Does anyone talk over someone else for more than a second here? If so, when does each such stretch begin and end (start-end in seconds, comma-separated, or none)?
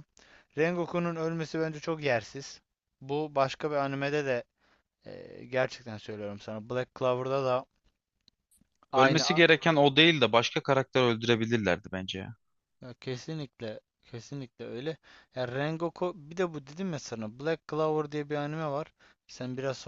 none